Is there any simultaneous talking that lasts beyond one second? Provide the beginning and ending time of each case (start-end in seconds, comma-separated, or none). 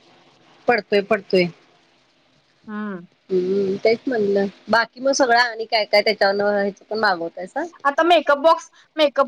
none